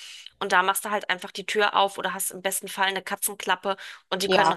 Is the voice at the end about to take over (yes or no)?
no